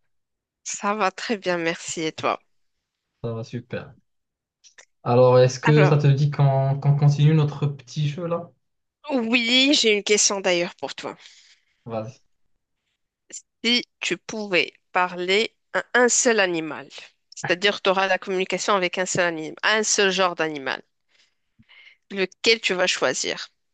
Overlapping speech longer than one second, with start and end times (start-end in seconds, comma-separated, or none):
none